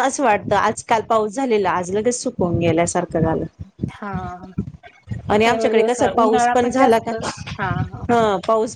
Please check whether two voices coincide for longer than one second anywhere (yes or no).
yes